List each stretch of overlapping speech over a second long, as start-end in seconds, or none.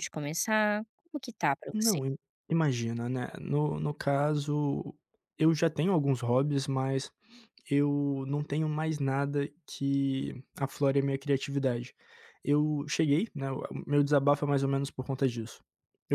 none